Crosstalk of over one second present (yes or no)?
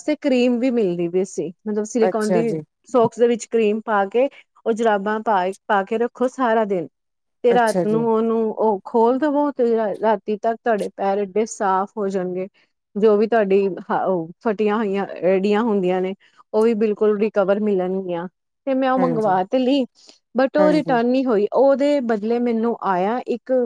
no